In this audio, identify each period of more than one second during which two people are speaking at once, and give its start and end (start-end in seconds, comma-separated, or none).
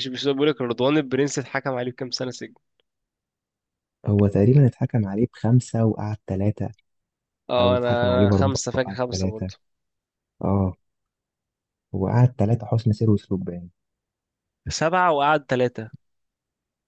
7.6-9.5